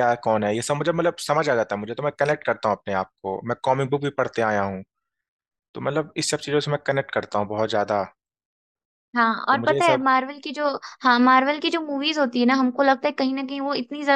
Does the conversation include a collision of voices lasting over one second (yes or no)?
no